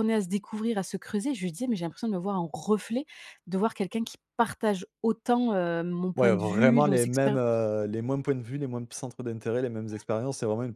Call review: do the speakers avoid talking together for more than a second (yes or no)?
no